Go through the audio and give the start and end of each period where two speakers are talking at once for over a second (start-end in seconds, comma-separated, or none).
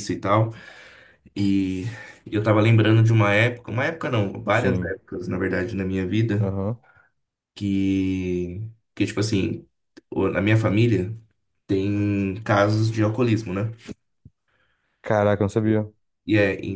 none